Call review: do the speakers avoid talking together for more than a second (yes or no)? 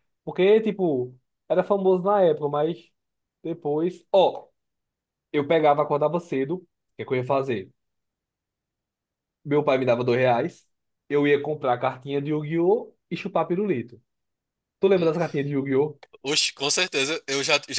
yes